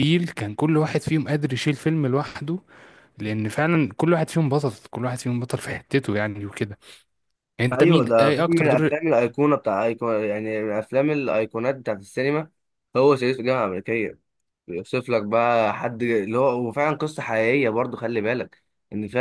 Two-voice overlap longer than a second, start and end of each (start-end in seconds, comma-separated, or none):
7.7-8.9